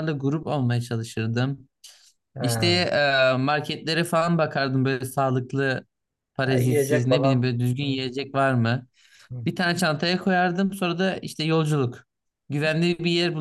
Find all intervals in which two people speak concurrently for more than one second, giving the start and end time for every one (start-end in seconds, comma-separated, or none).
6.4-8.0